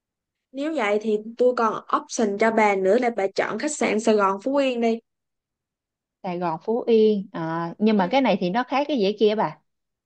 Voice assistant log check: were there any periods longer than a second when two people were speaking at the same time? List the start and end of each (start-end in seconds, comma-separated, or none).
none